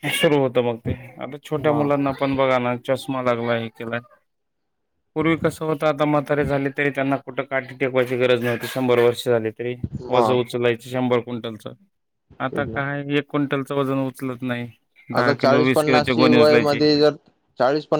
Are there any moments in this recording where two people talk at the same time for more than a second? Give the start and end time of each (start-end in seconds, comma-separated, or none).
15.2-16.8